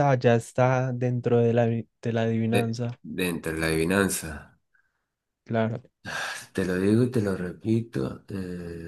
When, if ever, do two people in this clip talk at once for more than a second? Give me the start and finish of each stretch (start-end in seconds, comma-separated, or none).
none